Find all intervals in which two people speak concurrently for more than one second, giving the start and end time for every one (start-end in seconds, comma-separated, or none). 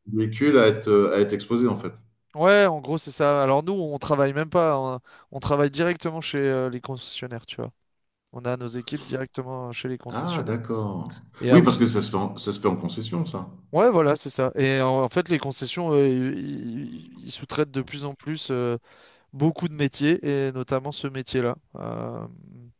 none